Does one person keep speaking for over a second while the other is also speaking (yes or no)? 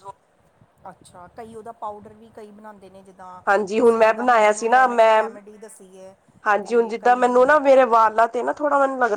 yes